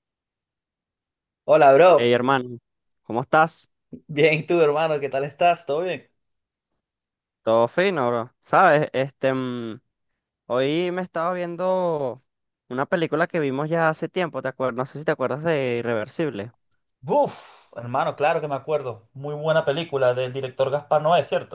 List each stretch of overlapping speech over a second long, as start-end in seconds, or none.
none